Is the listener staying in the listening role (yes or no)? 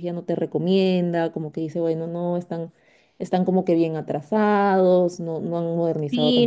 no